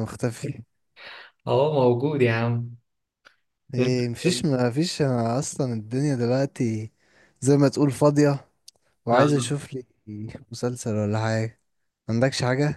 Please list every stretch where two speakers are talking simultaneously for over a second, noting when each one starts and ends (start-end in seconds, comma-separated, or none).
none